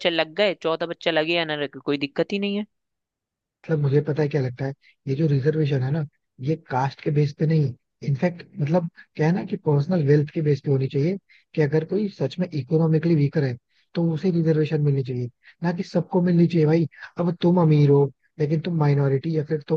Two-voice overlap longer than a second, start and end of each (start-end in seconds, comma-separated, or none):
none